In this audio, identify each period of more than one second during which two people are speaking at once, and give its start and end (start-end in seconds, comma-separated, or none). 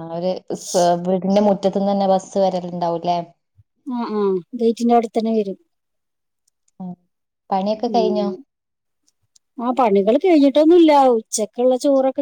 none